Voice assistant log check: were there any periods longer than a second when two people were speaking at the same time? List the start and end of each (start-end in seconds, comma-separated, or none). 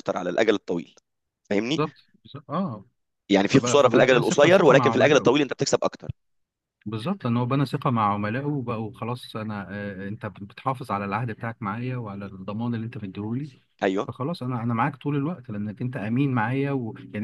3.5-5.3